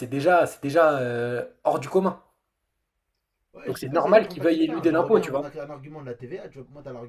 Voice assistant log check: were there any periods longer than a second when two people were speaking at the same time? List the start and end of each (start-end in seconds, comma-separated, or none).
3.6-5.5